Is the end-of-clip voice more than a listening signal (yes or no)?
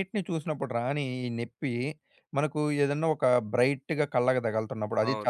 yes